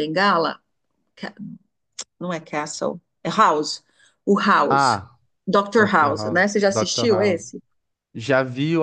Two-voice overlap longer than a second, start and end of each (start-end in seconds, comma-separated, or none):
5.8-7.5